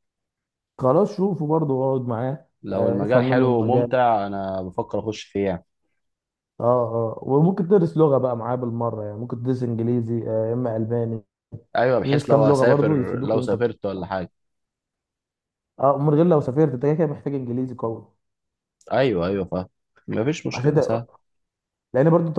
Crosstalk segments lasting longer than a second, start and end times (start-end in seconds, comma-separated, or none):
2.6-4.0, 12.0-13.7